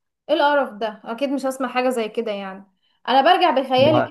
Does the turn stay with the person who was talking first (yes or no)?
yes